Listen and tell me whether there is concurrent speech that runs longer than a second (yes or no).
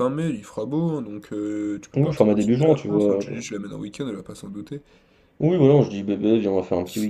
yes